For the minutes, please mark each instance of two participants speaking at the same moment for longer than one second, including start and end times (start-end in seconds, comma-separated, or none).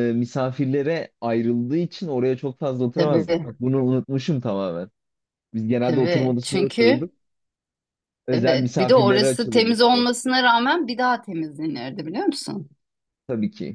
5.8-7.1, 8.3-10.1